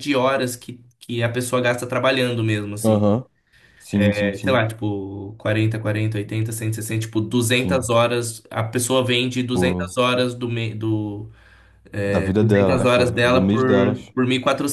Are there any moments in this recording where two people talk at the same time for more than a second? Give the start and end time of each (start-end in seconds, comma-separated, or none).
12.4-14.1